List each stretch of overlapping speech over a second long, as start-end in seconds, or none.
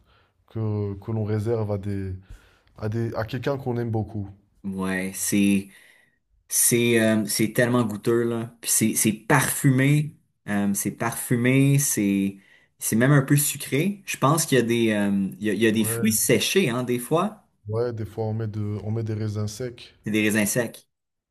none